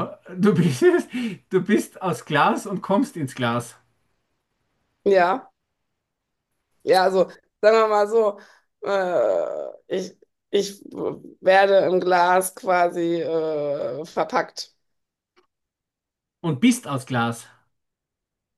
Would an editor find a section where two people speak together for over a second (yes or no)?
no